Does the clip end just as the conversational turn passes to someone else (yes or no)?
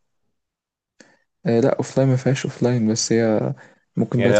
yes